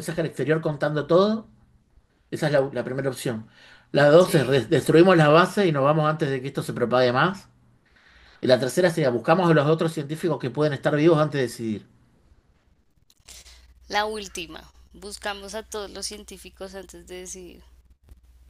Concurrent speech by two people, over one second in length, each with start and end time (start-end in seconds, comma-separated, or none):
none